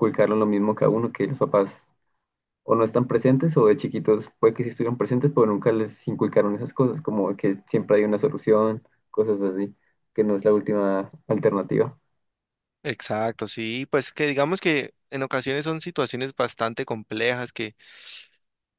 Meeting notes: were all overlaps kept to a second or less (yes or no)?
yes